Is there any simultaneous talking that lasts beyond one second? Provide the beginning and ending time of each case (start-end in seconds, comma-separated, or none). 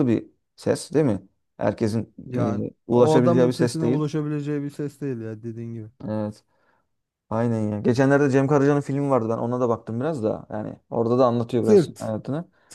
2.2-4.0